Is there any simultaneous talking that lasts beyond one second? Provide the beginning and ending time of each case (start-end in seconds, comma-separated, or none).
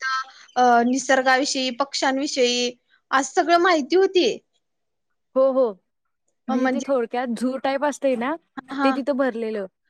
none